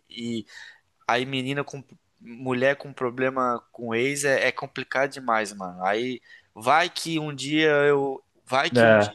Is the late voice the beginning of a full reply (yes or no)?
no